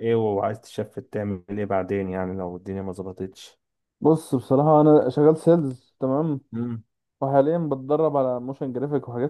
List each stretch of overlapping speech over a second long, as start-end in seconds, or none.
none